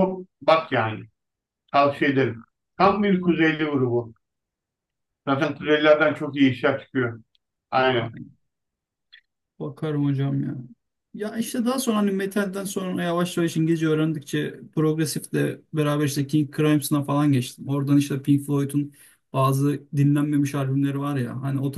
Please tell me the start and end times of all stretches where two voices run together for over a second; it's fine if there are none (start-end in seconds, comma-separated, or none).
none